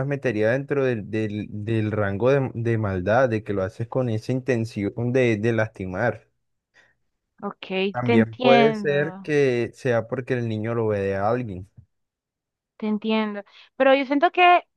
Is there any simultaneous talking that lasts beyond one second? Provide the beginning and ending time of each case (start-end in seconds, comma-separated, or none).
7.9-9.3